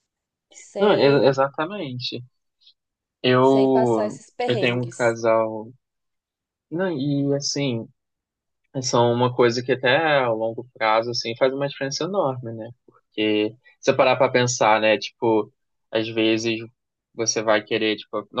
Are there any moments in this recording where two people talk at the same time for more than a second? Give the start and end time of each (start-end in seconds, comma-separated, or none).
3.4-5.2